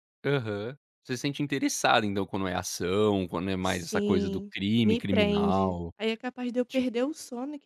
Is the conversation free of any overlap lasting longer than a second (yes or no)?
no